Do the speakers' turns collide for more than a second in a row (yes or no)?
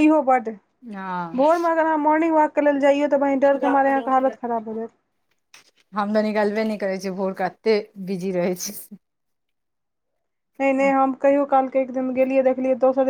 no